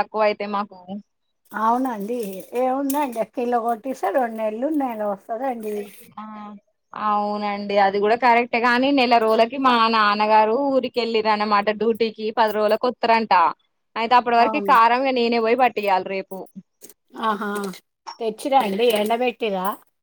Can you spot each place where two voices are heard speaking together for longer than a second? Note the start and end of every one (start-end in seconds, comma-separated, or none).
none